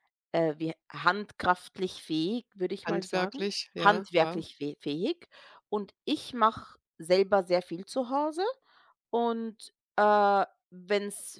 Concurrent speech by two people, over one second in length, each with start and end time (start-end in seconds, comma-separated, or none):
2.9-4.5